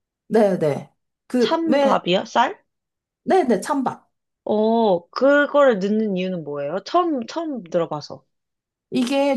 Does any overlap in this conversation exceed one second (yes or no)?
no